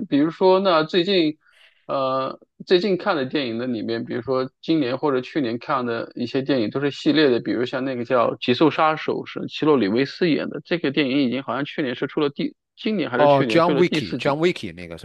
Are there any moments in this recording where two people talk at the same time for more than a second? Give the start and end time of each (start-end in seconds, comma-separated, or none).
13.2-14.4